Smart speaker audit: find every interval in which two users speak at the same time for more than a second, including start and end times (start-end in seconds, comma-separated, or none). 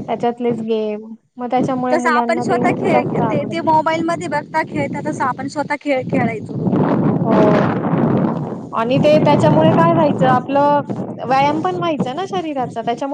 1.9-3.5